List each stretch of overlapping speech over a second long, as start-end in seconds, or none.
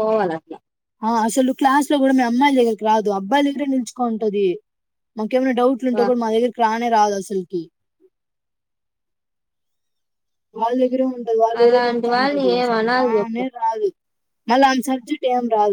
11.6-13.3